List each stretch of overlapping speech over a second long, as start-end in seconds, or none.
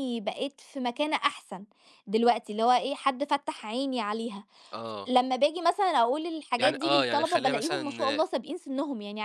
6.6-8.2